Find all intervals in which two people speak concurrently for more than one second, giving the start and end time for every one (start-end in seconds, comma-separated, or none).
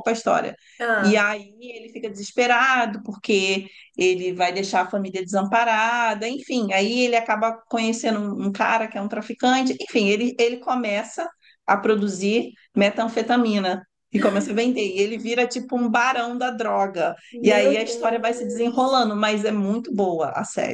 17.3-19.0